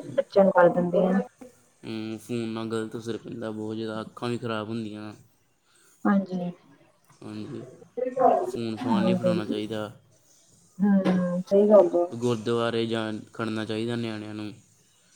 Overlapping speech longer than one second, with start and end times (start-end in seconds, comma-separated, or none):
none